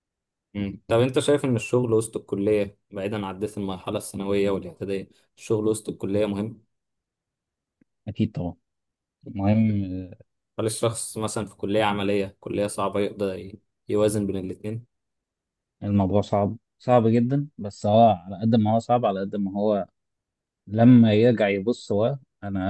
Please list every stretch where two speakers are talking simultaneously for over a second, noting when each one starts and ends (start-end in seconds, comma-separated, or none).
none